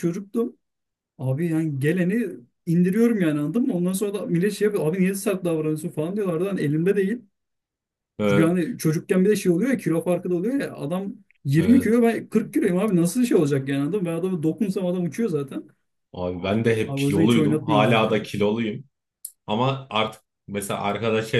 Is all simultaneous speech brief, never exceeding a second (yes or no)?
no